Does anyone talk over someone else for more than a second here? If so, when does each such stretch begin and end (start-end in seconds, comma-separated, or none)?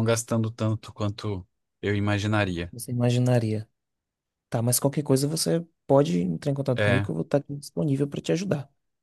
none